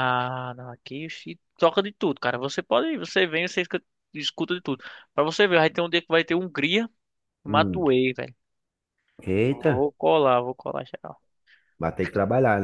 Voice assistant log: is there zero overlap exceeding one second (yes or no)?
yes